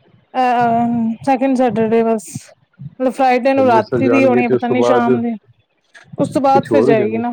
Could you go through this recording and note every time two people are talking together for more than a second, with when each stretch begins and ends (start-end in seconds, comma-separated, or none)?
3.3-5.1